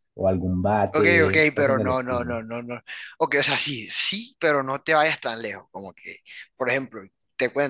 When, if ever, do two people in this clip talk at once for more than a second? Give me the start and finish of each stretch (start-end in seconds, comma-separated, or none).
0.9-2.4